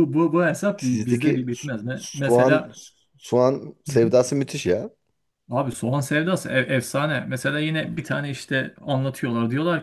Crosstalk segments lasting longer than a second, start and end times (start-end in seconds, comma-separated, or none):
0.8-2.7